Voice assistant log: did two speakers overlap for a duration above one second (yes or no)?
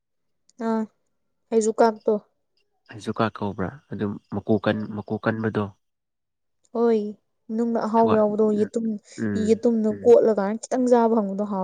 no